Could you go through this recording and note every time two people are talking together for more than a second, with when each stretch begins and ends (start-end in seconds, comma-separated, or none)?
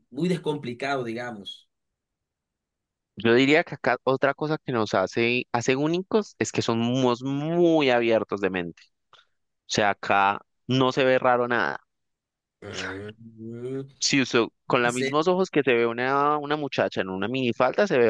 none